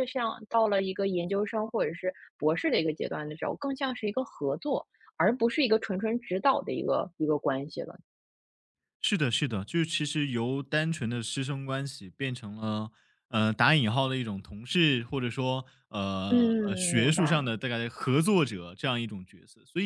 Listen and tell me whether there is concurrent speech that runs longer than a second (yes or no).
yes